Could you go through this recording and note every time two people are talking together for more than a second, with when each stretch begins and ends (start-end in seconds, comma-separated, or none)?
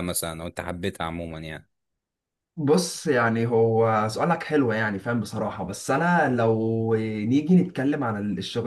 none